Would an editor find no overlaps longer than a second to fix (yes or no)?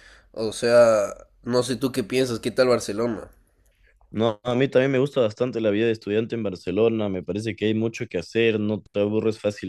yes